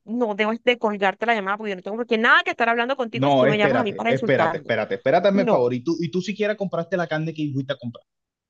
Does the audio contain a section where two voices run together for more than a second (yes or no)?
yes